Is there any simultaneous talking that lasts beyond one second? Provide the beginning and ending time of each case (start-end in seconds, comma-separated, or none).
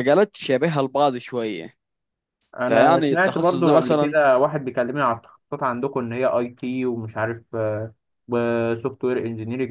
2.7-4.2